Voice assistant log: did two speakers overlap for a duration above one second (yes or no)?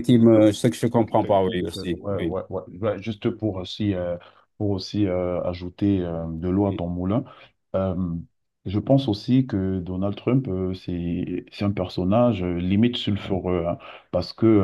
yes